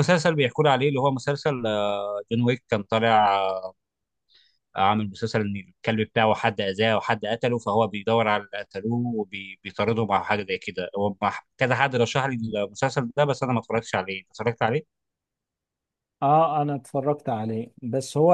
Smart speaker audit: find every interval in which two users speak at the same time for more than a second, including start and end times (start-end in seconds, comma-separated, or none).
none